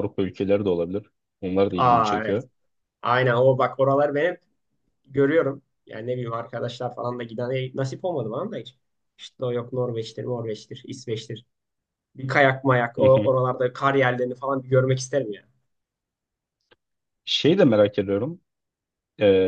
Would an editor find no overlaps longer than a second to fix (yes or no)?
yes